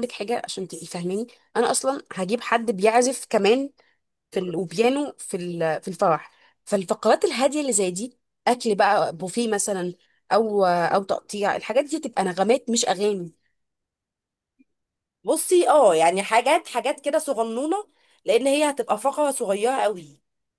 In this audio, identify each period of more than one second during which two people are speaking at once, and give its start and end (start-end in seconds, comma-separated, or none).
none